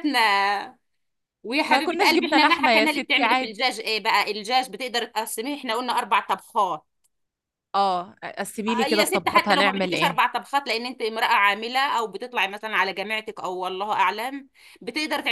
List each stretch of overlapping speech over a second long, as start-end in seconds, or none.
1.6-3.6, 8.7-10.2